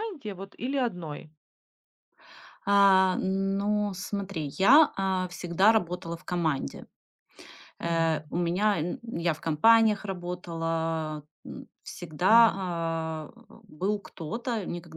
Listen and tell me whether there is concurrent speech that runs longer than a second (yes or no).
no